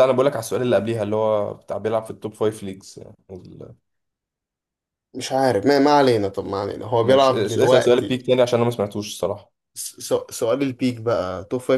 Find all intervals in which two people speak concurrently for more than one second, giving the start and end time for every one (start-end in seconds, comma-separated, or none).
7.0-8.2